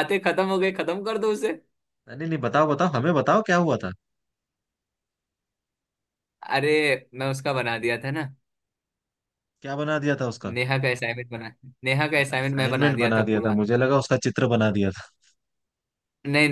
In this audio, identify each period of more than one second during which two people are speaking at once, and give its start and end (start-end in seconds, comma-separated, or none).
12.2-13.6